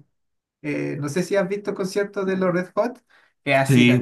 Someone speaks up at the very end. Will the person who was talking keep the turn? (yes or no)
yes